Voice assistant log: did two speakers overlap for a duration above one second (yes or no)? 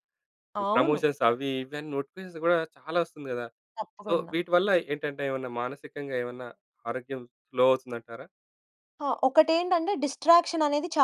no